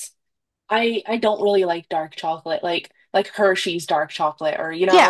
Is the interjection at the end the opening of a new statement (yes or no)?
yes